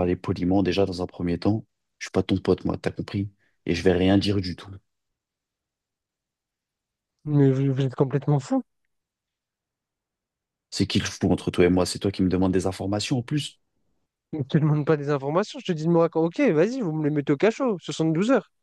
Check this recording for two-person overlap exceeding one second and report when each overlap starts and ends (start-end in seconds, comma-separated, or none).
none